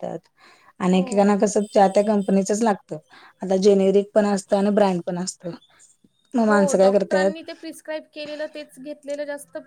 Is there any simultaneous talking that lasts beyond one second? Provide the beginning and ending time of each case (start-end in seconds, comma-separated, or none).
none